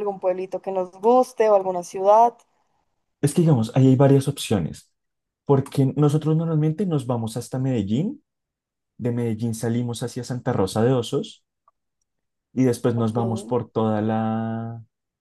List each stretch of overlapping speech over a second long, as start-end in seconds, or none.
none